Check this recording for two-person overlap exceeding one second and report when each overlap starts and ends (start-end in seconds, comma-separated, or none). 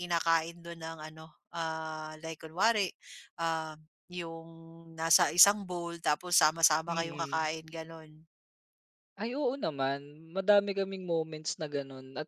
none